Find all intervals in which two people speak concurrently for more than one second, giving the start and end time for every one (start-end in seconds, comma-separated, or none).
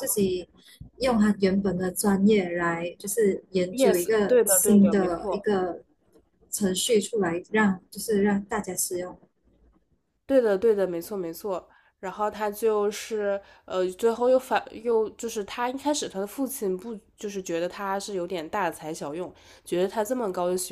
3.7-5.5